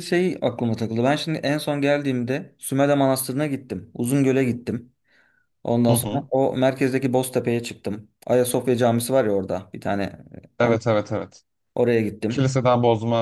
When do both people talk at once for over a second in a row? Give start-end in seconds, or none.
none